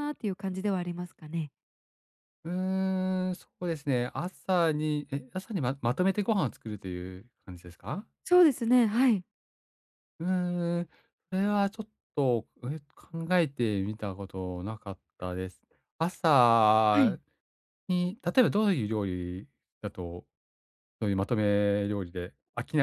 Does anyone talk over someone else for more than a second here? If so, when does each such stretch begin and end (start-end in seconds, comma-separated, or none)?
none